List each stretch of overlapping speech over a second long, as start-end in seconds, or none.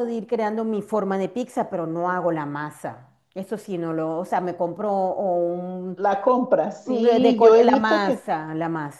6.8-8.3